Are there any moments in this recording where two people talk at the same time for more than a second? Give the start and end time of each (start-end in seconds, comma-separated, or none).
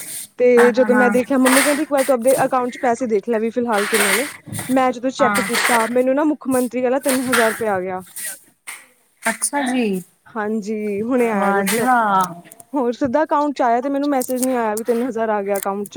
none